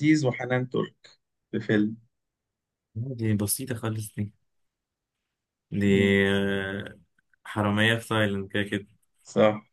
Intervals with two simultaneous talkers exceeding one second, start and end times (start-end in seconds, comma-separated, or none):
none